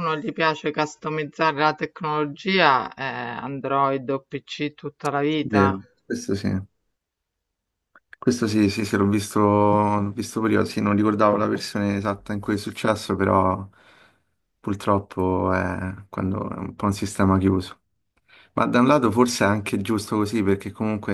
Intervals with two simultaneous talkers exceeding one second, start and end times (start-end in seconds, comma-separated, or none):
none